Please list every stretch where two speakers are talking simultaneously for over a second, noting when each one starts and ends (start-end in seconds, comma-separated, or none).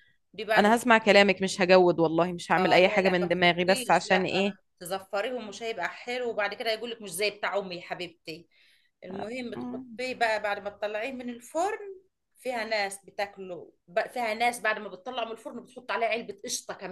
2.6-4.5